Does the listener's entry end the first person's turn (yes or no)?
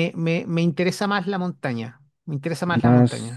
yes